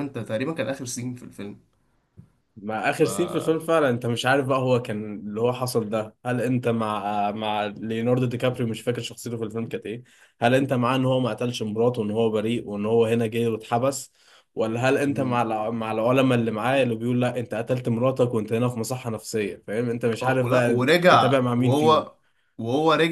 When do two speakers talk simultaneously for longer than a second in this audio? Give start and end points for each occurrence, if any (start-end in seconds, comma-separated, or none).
20.2-22.1